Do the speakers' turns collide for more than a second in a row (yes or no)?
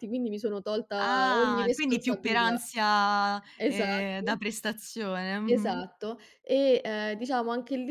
yes